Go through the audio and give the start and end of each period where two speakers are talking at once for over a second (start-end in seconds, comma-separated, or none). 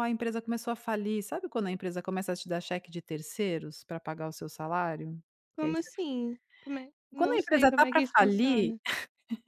7.2-8.7